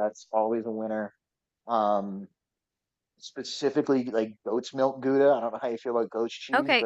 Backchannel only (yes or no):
no